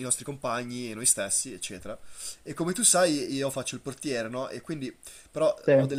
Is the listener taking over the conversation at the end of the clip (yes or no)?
no